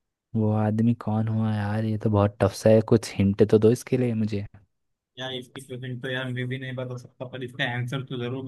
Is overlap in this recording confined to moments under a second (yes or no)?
yes